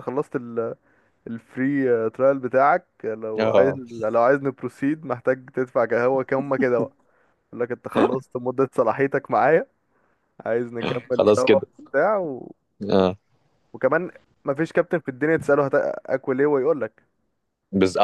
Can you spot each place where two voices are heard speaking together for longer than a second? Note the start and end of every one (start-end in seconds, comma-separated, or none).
none